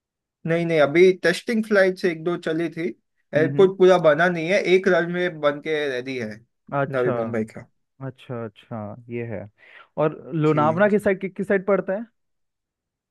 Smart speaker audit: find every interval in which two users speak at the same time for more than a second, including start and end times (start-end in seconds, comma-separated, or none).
none